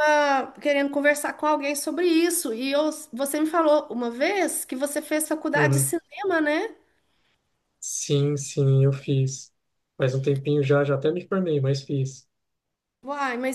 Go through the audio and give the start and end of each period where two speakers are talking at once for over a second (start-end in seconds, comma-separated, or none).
none